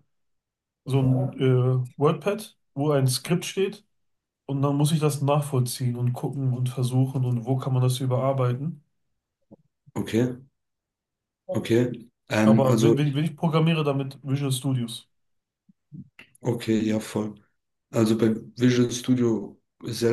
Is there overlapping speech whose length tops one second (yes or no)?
no